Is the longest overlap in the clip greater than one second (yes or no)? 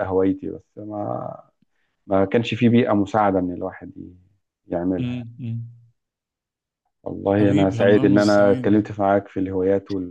yes